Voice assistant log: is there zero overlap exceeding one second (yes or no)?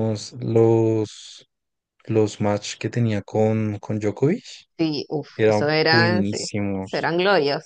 no